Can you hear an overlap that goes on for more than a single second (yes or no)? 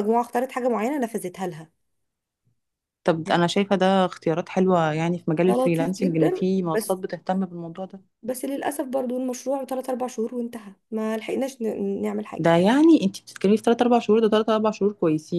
yes